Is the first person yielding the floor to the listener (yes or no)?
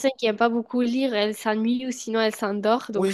yes